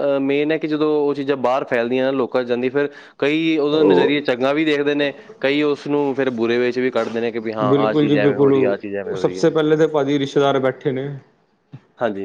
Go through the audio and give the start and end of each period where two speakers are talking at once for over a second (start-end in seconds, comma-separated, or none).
none